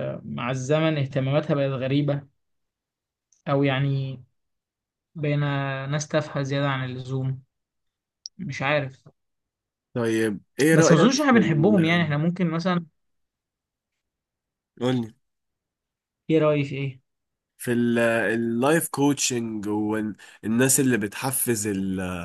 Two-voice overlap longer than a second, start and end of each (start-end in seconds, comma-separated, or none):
10.7-12.1